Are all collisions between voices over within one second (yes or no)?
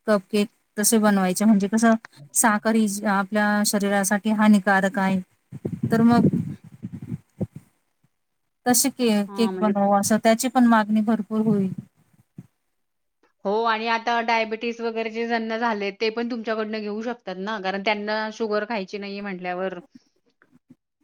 yes